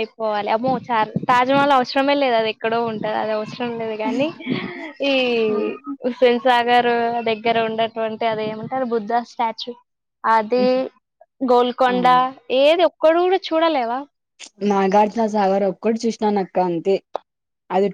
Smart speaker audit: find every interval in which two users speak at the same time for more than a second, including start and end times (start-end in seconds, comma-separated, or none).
none